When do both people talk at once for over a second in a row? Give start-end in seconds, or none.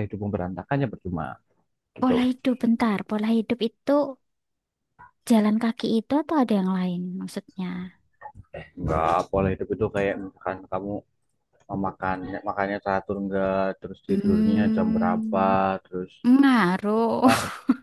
14.1-15.4